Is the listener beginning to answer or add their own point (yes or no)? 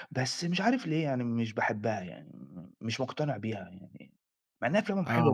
no